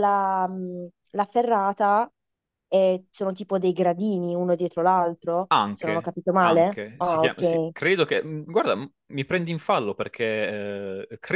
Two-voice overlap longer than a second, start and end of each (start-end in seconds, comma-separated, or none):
5.5-7.7